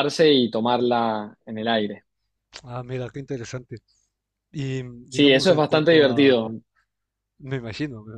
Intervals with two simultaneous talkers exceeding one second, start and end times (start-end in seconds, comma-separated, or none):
5.1-6.4